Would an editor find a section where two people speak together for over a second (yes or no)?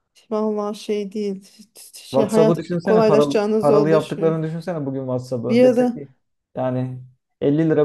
yes